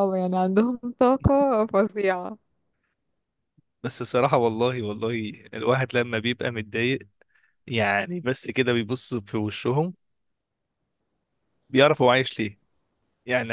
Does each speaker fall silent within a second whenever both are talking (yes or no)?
yes